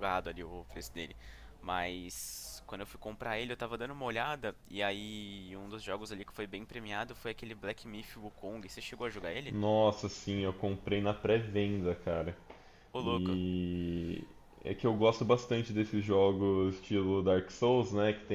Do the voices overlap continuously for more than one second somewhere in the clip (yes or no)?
no